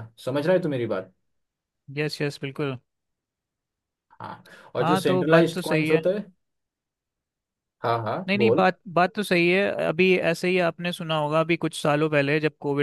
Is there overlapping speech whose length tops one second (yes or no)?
yes